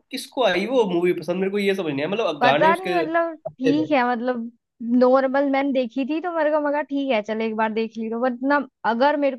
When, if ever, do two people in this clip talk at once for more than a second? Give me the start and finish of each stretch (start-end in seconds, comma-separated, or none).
2.4-3.9